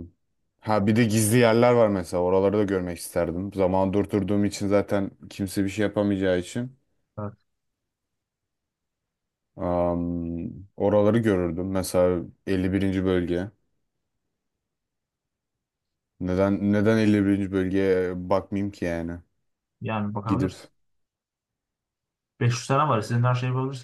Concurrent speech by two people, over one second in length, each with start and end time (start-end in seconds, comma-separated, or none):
none